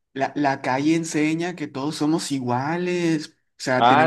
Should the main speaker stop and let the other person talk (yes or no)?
yes